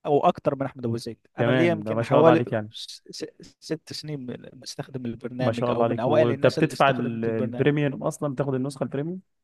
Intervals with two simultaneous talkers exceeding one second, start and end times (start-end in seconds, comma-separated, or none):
1.4-2.7, 5.4-7.7